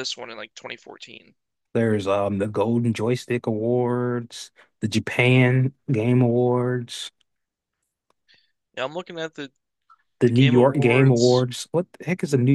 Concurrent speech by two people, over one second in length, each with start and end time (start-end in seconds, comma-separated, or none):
10.2-11.4